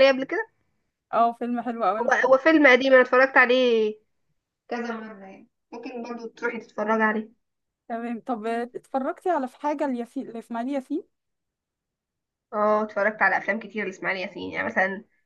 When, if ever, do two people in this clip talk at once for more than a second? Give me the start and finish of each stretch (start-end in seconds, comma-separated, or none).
none